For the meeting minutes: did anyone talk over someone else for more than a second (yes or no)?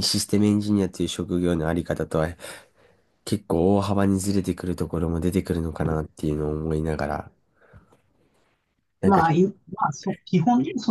no